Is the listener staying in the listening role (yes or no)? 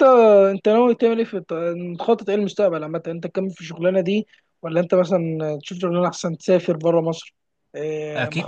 no